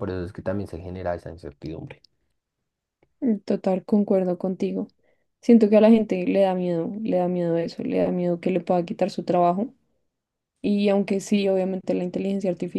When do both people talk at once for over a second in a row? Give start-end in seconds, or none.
none